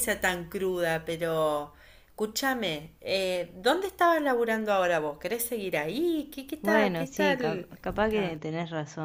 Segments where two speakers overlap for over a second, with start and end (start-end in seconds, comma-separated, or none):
6.6-8.4